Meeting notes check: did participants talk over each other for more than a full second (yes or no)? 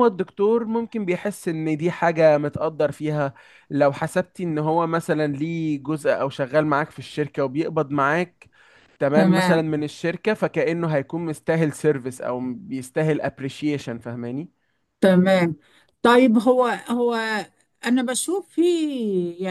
no